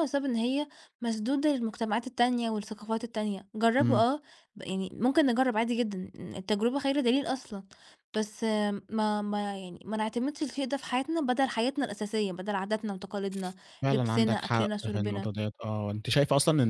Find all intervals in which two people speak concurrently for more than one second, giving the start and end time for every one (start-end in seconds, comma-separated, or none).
13.9-15.3